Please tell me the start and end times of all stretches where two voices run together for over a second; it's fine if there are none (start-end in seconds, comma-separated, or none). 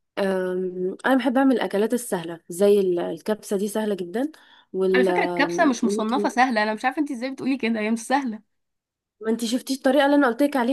4.9-6.3